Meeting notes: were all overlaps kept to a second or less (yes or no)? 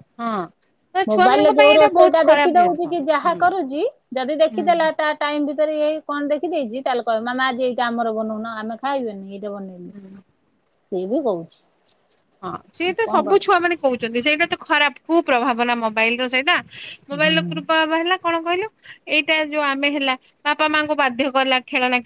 no